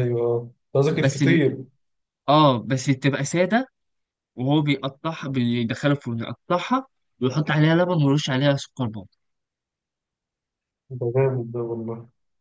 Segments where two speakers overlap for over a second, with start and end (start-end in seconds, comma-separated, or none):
none